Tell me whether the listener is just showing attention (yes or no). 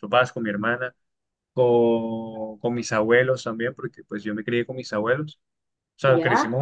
yes